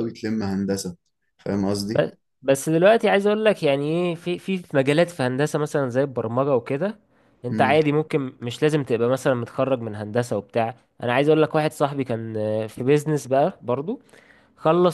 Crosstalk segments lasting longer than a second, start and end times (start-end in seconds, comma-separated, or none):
none